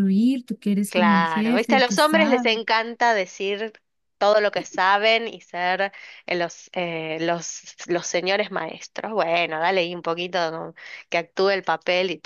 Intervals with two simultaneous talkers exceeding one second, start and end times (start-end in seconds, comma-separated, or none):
0.9-2.6